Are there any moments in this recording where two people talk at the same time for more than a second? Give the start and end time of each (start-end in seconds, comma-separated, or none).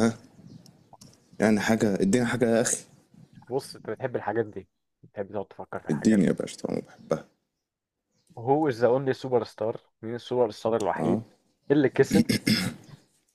none